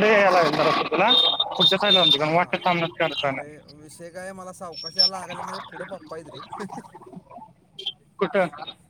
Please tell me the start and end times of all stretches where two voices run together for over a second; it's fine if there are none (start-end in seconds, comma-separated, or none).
none